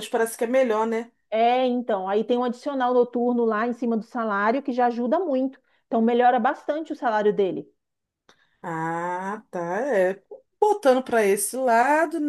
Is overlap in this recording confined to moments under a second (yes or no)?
yes